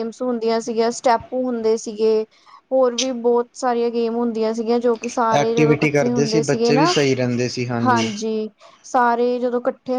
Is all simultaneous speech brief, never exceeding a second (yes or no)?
no